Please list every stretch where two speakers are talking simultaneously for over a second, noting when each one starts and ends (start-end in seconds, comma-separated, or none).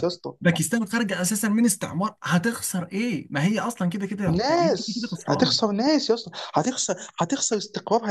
4.2-5.6